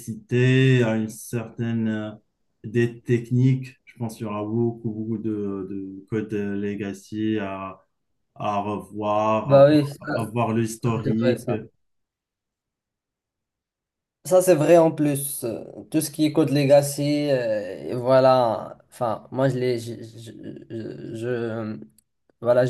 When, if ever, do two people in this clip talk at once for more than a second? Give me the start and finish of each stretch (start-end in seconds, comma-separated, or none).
none